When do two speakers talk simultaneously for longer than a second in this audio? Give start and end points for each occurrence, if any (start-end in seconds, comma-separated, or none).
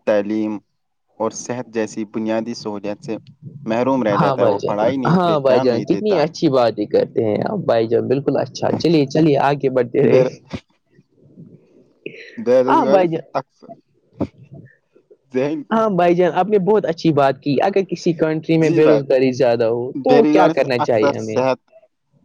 20.1-21.4